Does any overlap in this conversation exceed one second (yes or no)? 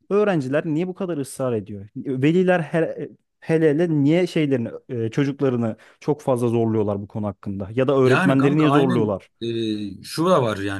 yes